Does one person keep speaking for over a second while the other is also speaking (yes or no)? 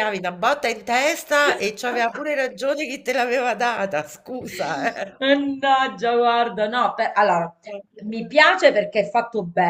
no